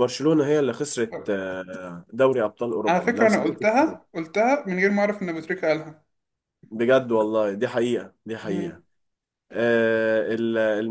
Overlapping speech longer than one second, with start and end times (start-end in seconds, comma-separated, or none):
2.9-4.1